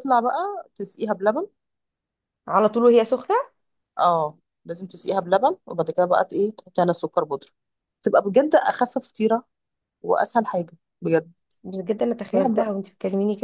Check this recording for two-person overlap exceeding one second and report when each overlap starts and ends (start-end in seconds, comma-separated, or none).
none